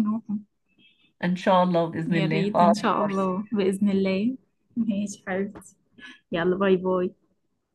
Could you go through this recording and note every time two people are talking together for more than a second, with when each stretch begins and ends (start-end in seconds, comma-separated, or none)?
2.1-3.3